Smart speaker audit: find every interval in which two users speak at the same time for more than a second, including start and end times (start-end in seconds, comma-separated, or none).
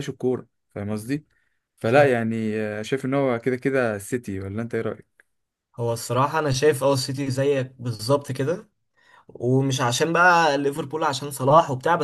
none